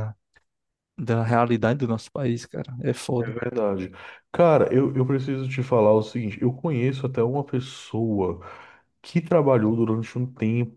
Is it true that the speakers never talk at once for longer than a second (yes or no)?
yes